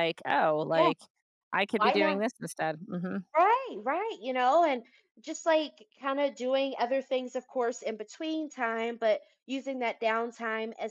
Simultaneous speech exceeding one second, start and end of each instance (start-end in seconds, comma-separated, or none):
none